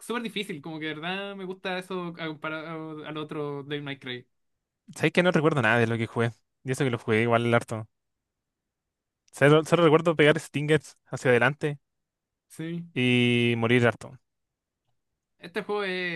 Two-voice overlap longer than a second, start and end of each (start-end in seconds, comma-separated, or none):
none